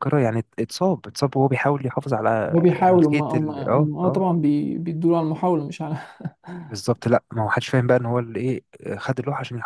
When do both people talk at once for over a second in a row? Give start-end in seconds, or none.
2.5-4.2